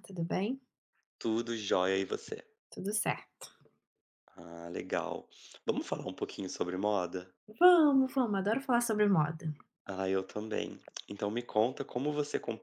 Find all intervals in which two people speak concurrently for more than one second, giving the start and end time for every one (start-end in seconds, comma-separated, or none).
none